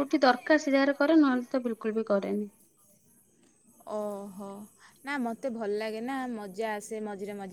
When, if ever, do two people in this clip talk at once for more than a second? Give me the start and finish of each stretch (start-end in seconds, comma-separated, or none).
none